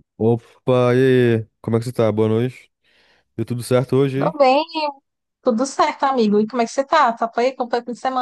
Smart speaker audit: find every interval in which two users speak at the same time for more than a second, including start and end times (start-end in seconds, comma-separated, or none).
none